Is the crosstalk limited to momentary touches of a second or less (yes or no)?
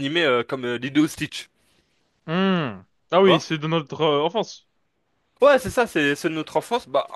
yes